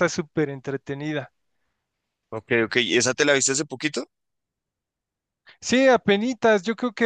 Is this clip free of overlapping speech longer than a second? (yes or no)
yes